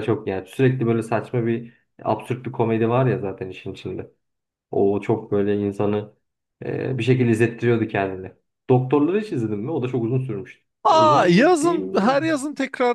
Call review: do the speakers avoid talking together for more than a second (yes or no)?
no